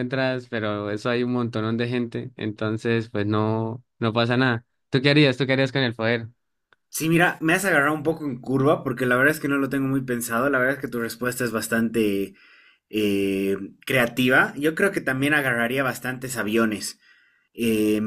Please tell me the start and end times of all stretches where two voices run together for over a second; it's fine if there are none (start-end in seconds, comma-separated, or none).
none